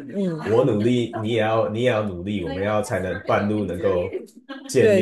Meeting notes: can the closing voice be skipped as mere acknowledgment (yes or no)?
no